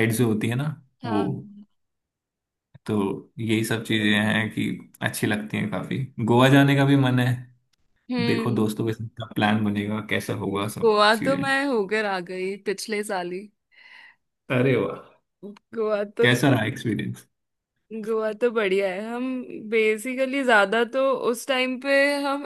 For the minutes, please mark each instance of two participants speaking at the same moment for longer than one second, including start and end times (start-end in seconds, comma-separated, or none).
none